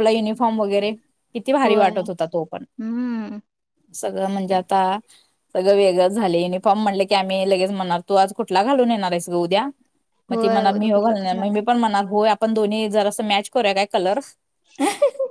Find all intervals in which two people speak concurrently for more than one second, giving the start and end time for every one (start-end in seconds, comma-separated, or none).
10.3-11.6